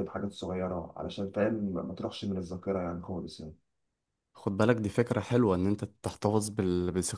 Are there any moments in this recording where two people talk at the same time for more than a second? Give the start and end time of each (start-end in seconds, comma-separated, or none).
none